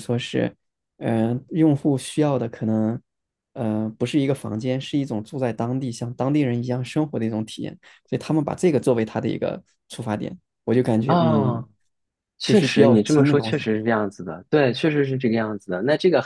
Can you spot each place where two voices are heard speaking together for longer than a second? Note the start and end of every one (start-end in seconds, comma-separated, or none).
12.4-13.7